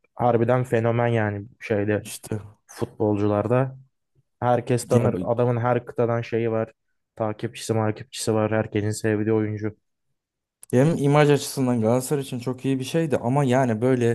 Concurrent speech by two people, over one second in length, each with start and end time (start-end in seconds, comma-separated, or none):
none